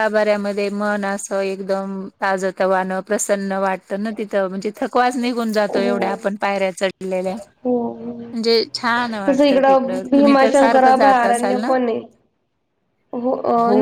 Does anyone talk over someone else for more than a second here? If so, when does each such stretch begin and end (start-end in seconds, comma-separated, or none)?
9.3-11.7